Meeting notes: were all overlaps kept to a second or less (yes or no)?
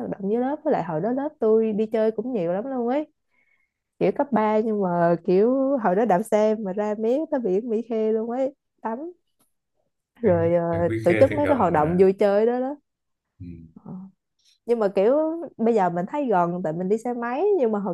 no